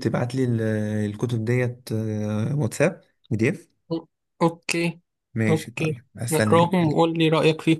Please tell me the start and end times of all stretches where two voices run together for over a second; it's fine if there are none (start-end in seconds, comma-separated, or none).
5.5-7.0